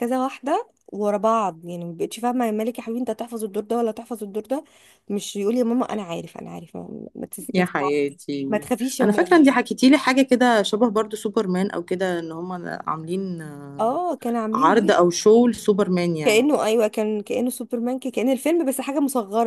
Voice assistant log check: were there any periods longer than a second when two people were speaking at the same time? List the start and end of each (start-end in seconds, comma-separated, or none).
none